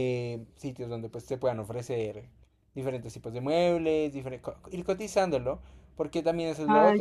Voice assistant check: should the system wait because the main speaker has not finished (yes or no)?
yes